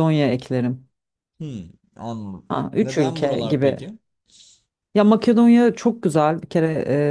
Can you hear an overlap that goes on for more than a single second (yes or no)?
yes